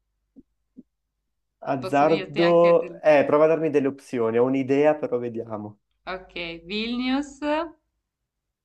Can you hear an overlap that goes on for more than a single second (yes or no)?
yes